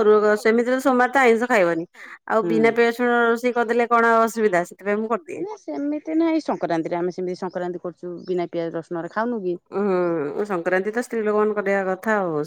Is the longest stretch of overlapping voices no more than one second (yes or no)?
yes